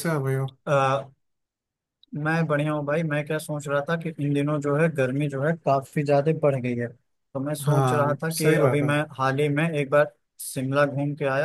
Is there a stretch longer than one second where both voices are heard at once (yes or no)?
yes